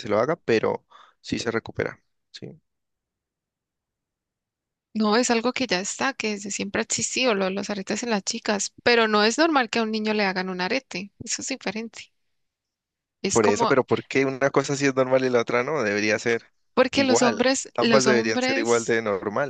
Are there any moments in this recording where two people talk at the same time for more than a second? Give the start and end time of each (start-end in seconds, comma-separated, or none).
16.9-19.0